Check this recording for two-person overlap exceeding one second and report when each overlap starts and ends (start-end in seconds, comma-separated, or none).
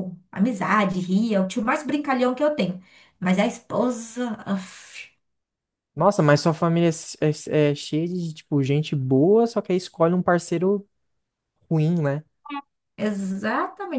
none